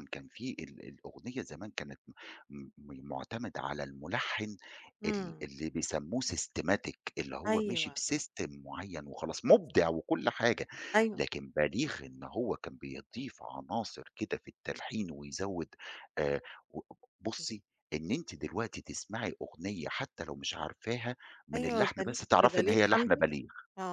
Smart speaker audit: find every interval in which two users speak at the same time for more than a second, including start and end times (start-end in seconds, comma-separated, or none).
21.5-23.2